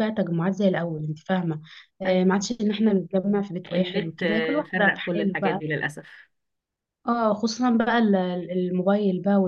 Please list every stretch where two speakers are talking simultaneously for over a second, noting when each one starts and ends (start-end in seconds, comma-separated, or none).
3.7-5.6